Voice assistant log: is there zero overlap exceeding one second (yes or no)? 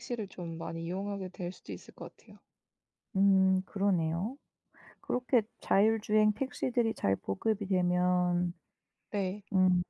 yes